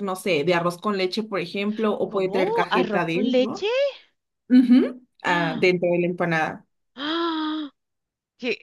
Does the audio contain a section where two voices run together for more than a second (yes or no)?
yes